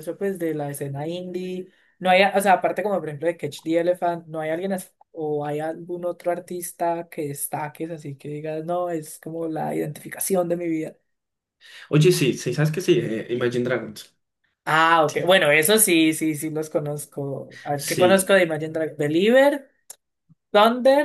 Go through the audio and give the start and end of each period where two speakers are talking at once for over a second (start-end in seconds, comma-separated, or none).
none